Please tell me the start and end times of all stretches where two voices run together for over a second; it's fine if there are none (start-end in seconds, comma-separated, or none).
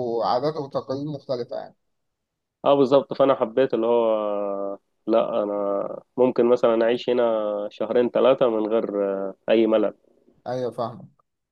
none